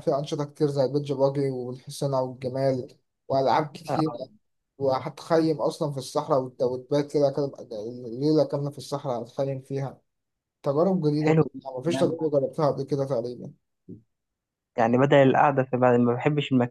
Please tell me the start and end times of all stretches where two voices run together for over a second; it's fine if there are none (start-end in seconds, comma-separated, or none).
none